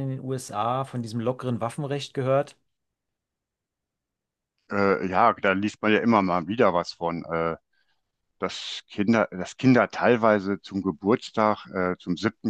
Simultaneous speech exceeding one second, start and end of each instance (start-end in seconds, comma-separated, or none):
none